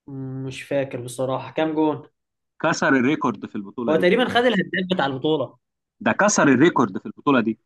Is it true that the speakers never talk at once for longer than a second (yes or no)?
yes